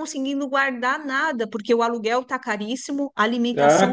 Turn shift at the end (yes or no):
yes